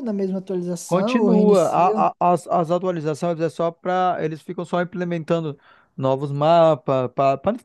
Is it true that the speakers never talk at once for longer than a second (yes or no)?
no